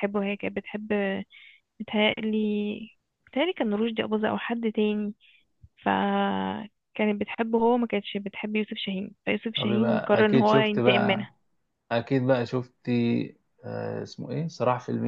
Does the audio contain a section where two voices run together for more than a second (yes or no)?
yes